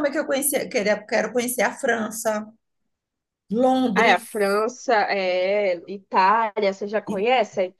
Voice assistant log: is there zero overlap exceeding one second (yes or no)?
yes